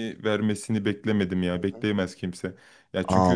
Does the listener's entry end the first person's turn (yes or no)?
yes